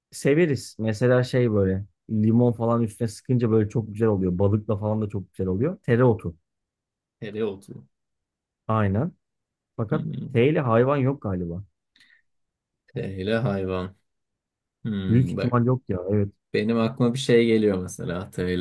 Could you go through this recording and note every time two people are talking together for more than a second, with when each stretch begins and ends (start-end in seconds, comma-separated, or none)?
none